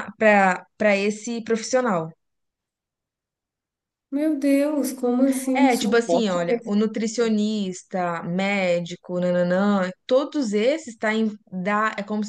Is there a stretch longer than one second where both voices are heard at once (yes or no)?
yes